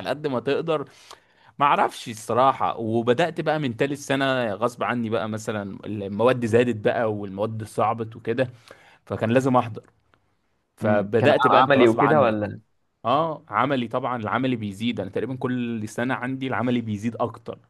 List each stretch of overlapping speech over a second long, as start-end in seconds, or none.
10.8-12.5